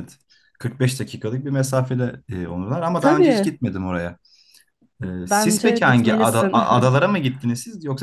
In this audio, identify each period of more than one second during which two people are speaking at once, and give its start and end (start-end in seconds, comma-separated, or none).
5.2-6.6